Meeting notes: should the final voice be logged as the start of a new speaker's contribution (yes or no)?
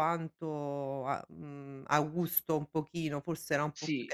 no